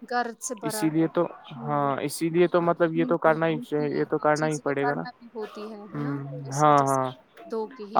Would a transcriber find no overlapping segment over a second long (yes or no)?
no